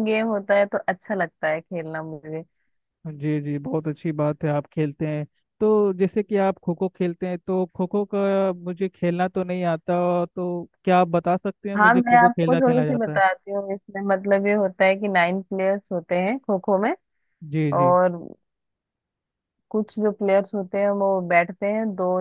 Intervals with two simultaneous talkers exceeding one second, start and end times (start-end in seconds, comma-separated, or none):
11.8-13.2